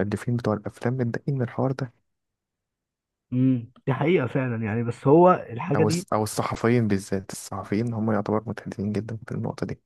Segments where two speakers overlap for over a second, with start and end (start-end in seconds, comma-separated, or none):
none